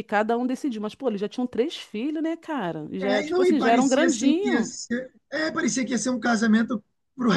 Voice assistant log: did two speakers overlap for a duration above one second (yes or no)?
yes